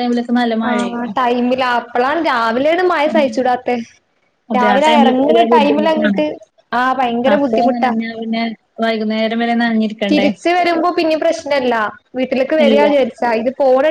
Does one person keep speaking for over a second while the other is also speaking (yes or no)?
yes